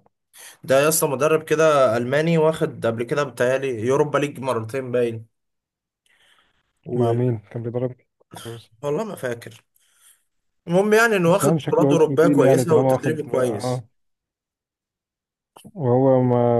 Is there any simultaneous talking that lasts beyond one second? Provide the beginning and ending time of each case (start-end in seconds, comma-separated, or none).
11.2-13.8